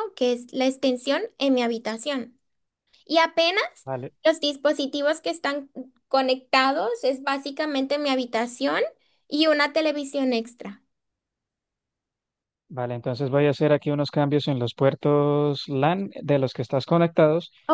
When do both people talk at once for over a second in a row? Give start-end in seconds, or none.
none